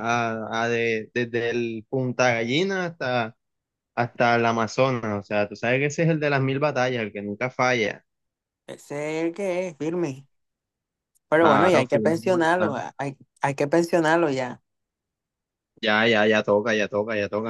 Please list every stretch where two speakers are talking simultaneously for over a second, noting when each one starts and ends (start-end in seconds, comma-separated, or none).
11.4-12.8